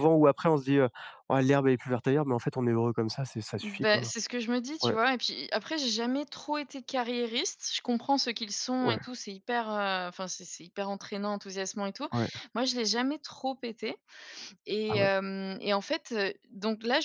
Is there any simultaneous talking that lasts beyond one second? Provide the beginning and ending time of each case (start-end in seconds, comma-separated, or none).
none